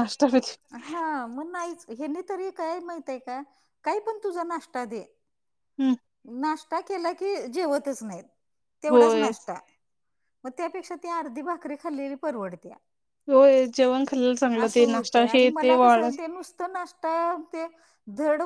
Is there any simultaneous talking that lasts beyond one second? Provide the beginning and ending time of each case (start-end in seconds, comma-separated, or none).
14.6-16.2